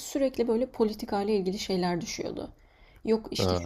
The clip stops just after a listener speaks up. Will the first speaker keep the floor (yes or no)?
yes